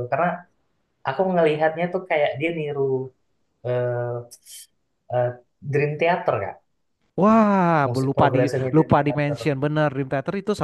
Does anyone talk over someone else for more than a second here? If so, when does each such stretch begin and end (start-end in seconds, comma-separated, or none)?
7.9-9.4